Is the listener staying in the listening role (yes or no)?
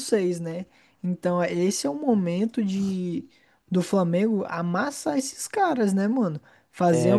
yes